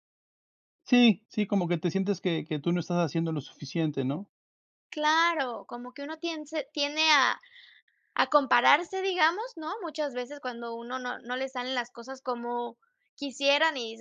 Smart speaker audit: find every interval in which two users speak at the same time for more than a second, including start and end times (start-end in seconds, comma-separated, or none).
none